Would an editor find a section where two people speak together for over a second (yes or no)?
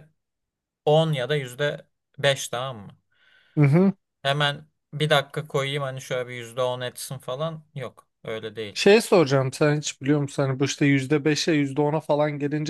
no